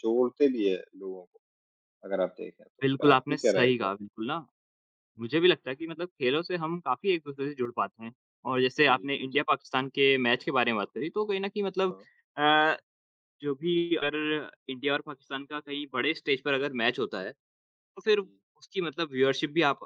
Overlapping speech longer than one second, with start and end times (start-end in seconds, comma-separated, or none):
2.8-4.0